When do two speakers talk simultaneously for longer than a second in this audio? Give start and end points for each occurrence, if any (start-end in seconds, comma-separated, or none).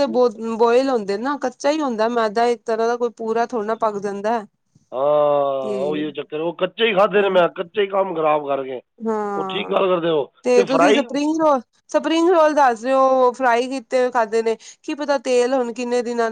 none